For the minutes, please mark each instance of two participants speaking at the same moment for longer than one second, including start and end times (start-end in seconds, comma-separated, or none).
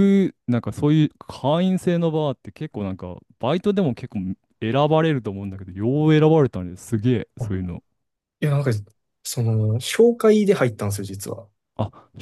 none